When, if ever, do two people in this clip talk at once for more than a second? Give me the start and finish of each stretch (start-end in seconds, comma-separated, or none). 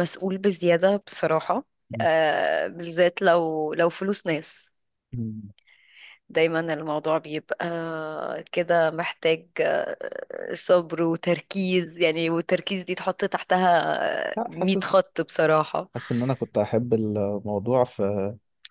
none